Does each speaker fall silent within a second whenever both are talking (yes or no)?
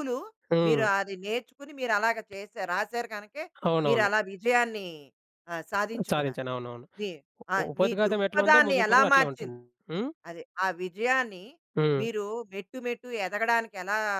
no